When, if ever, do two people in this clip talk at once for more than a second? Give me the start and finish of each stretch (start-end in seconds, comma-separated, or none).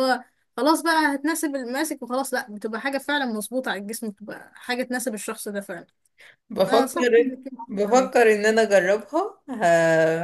6.7-8.1